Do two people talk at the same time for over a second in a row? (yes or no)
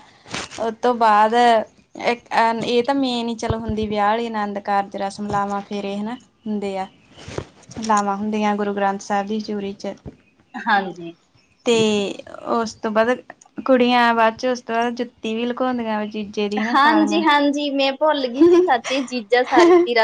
no